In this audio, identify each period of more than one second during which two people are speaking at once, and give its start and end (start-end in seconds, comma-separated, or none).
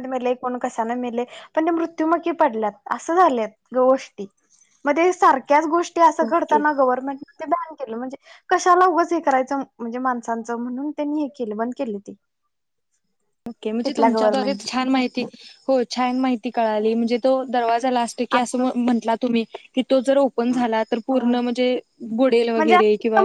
none